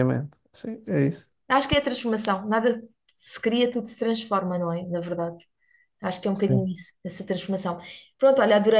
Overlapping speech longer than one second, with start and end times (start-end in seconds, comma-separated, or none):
none